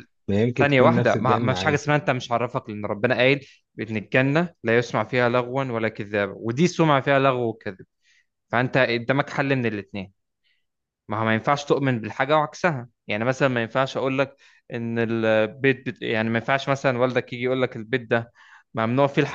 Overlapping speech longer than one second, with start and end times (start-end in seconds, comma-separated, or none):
0.6-1.8